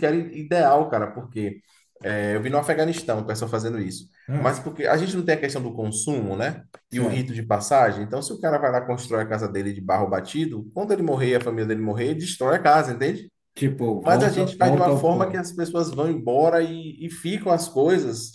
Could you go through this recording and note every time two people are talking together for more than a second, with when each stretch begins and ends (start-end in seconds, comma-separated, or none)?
14.0-15.4